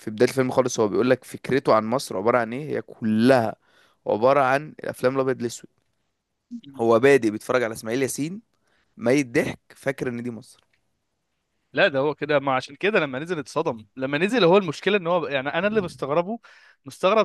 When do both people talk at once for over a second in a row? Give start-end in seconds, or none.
none